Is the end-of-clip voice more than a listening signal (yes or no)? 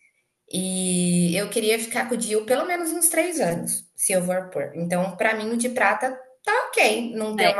yes